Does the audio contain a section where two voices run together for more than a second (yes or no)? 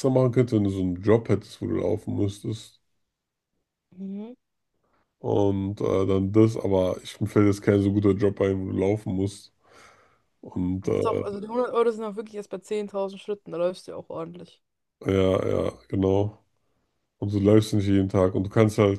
no